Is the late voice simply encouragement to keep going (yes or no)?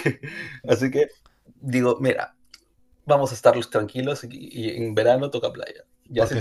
yes